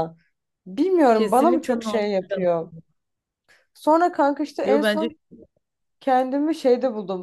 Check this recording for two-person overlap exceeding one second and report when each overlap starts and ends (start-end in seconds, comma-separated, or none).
1.1-2.5